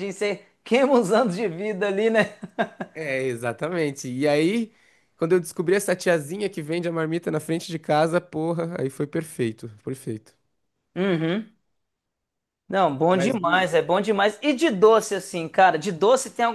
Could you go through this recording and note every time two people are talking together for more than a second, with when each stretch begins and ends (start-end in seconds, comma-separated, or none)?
none